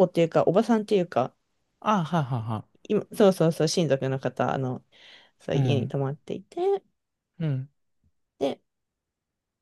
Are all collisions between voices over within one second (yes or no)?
yes